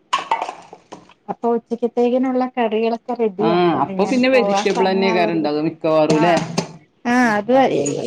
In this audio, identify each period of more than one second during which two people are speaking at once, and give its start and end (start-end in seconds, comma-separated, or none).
3.5-5.5